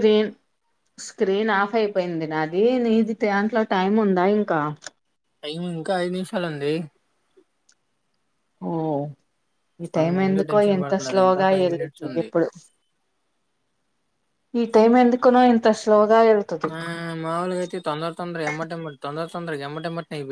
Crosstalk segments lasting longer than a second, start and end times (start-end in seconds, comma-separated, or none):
10.0-12.3